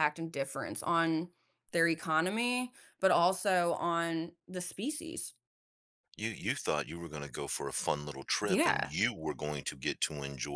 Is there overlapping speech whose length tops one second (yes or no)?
no